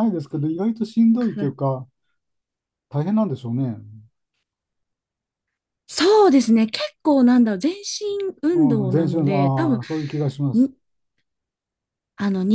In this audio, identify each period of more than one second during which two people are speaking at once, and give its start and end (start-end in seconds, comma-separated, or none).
8.5-9.8